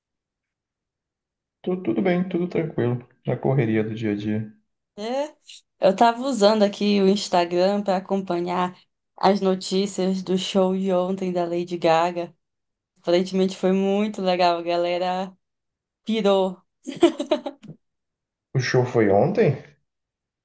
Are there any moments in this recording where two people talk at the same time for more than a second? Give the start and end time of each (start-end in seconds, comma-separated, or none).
none